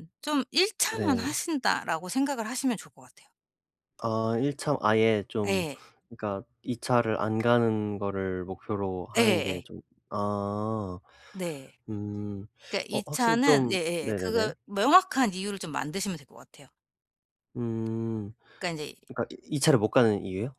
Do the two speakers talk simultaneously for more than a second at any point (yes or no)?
yes